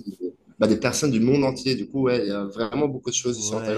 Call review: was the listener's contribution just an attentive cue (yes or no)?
no